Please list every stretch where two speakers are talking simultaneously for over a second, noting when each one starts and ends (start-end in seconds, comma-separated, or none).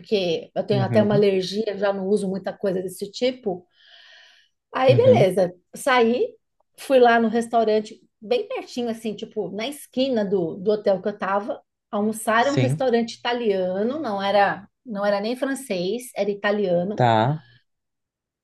none